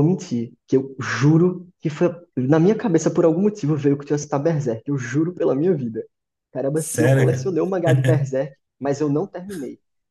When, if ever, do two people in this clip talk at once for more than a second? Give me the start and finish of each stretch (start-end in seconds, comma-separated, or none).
6.7-8.3